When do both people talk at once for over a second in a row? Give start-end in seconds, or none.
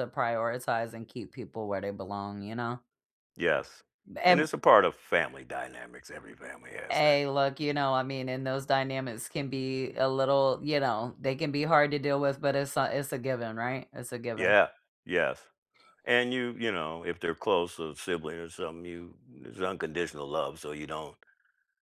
none